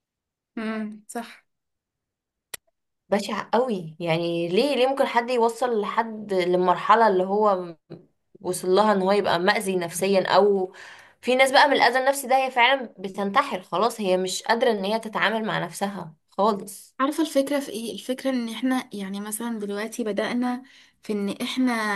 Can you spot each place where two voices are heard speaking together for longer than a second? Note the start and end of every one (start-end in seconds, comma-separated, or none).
none